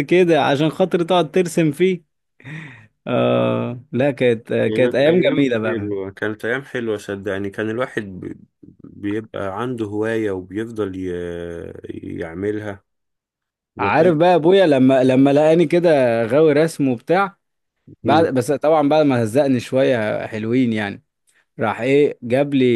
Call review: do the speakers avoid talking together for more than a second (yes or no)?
no